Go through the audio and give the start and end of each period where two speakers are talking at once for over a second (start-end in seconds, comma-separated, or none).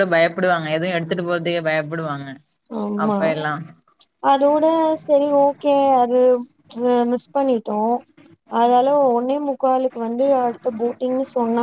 none